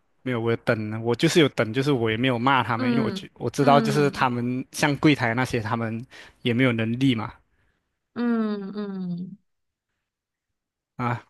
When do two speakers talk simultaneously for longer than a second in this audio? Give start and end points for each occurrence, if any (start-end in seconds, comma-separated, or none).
2.8-4.3